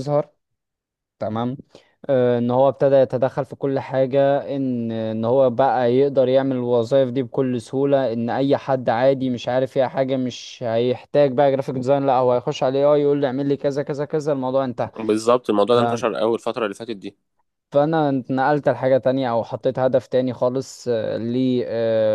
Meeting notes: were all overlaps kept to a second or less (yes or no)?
yes